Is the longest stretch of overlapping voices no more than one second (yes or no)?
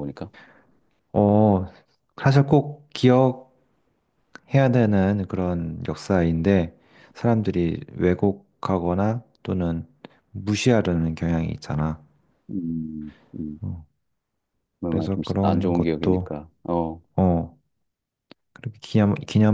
no